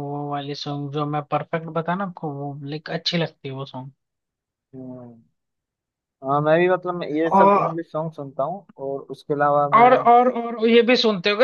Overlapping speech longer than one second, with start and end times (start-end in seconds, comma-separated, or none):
none